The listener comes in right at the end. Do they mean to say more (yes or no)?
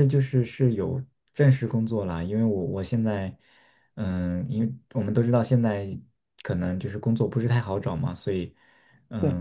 no